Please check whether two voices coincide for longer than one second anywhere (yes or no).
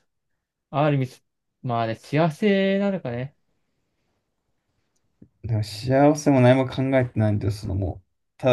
no